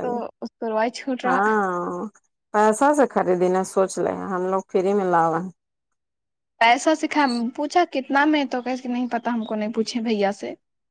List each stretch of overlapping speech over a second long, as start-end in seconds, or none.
none